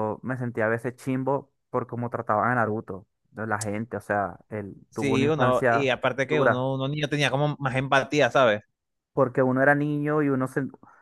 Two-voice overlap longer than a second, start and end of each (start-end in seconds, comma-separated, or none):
4.9-6.7